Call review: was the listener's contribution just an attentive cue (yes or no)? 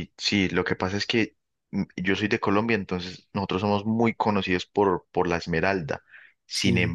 yes